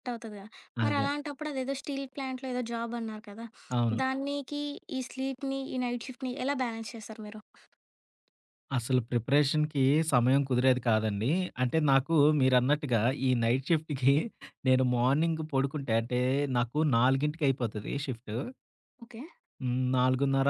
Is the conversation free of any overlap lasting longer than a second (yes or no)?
yes